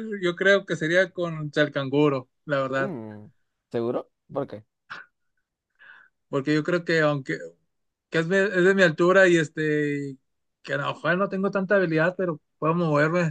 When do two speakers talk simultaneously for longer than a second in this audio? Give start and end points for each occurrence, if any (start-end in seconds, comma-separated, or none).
none